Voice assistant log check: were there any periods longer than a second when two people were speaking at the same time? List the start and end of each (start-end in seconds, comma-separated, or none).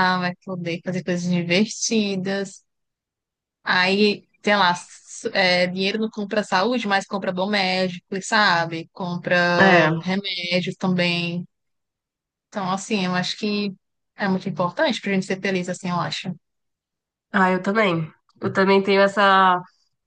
none